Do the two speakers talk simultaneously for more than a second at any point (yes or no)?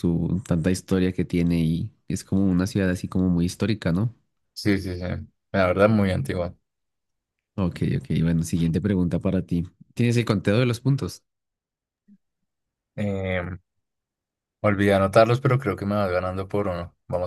no